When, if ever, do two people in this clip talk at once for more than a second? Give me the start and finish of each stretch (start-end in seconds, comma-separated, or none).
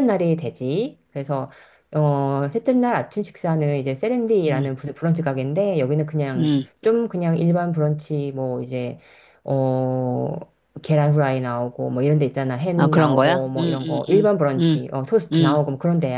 12.8-14.2